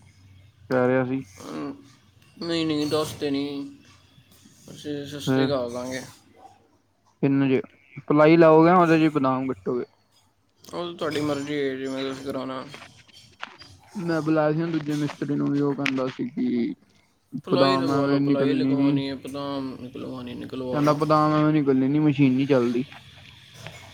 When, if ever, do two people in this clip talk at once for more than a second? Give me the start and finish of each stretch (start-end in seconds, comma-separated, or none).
17.5-19.0